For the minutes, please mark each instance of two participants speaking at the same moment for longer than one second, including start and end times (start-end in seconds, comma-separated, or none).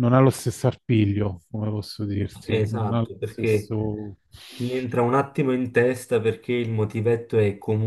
2.4-3.7